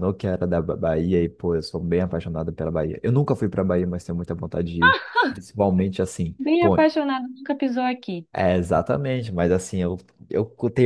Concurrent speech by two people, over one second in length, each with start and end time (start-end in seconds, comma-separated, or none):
none